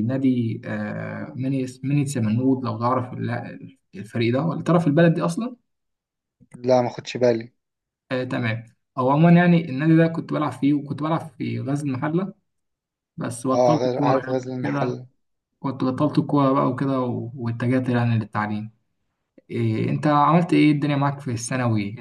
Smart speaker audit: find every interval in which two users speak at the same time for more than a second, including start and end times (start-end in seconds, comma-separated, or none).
13.5-15.0